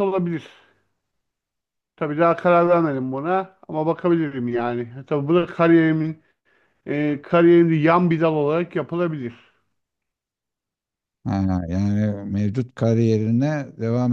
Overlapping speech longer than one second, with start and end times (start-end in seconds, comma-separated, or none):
none